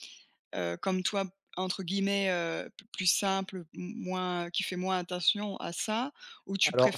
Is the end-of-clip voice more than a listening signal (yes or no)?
yes